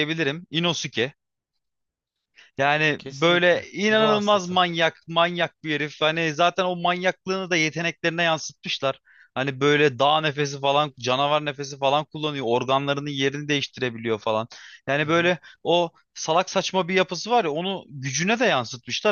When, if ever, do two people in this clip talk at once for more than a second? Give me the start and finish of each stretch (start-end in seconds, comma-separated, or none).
3.0-4.6